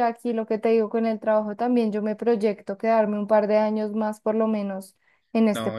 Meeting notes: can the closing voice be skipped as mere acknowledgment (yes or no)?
no